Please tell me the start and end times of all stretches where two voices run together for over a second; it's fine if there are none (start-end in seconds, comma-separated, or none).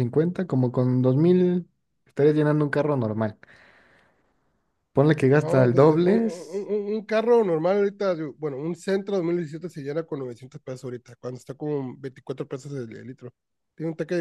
5.4-6.7